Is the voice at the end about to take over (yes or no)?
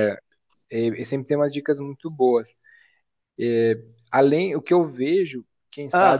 no